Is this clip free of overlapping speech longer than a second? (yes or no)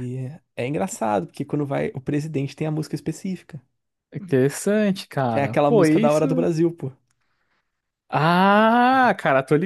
no